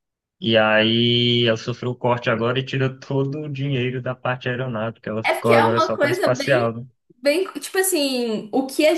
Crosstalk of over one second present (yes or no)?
yes